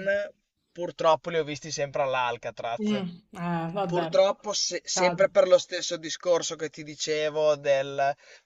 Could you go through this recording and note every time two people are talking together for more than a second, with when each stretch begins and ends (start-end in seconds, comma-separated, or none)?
none